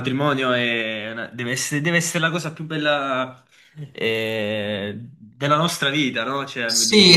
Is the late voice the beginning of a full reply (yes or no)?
yes